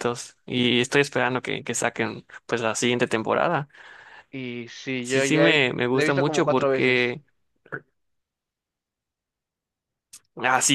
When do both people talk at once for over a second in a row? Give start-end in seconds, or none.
5.0-7.2